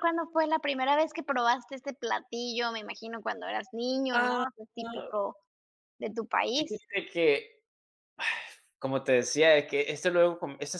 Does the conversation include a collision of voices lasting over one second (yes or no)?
no